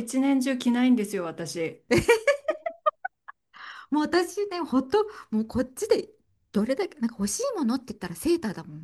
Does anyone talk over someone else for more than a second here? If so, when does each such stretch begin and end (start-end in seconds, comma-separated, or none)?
none